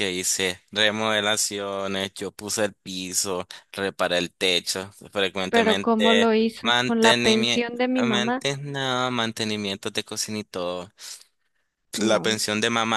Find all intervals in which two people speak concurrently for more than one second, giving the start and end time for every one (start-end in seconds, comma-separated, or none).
5.5-7.6